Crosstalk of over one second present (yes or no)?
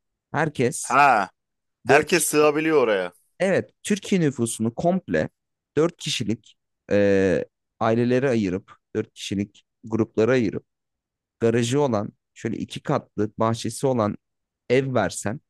no